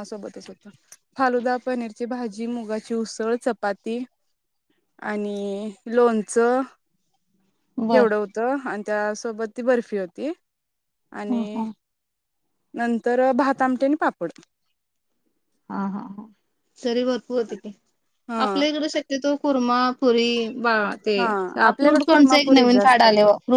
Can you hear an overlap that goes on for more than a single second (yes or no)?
yes